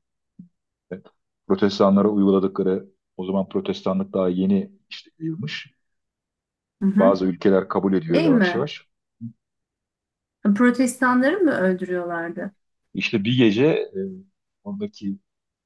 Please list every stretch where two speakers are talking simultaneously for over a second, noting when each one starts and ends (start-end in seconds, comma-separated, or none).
none